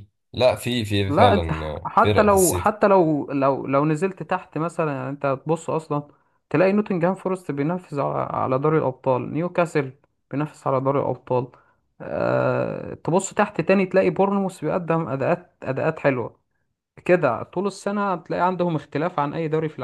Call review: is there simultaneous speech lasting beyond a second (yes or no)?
yes